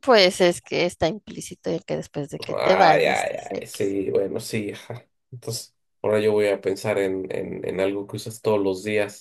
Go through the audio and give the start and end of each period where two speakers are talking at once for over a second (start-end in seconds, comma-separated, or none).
2.5-3.9